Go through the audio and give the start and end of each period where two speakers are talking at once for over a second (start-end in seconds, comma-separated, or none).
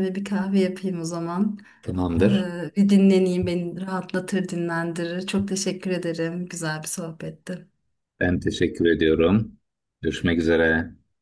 none